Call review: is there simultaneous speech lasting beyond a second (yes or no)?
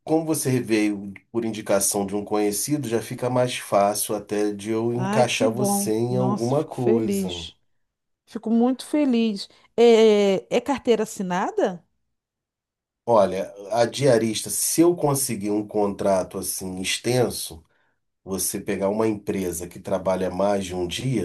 yes